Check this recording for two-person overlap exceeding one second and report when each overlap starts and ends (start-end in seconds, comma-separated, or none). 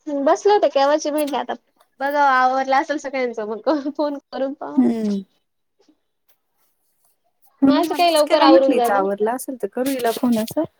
7.7-9.0